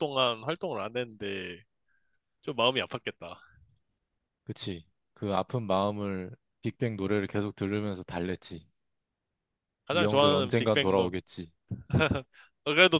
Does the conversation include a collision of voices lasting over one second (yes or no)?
yes